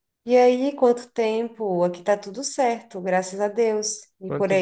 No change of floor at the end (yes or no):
no